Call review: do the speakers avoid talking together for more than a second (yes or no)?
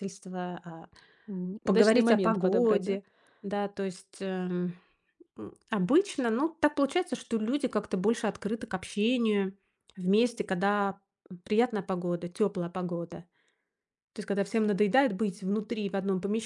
no